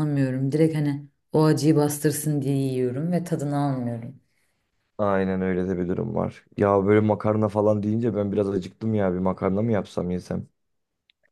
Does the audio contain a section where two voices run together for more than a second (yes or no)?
no